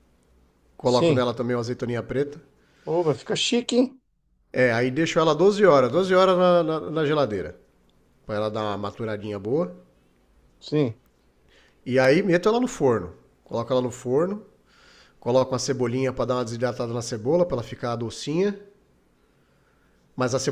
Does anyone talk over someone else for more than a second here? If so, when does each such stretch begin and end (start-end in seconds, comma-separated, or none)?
none